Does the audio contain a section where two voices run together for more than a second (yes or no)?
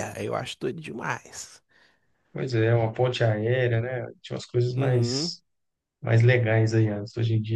no